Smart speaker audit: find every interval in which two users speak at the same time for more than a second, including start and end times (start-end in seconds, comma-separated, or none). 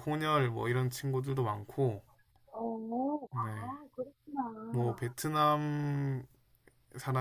none